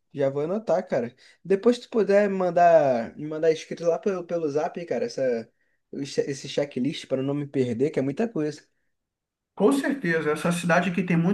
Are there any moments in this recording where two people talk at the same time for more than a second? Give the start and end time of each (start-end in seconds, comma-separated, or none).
none